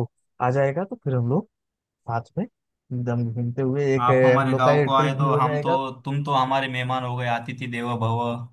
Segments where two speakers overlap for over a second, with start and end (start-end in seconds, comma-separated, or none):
4.0-5.8